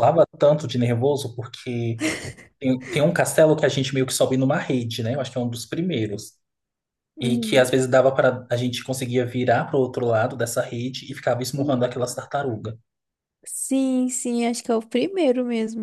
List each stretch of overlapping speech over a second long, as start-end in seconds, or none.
none